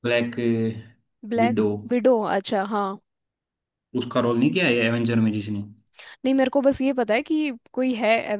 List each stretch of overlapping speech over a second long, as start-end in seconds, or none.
none